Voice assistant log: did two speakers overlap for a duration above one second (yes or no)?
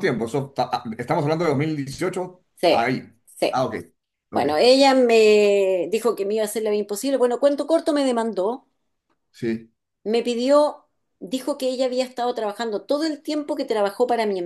no